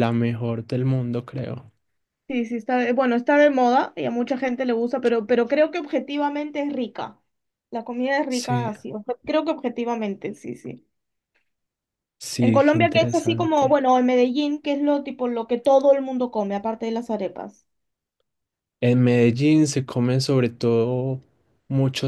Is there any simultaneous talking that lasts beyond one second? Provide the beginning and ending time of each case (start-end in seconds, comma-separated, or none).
12.3-13.8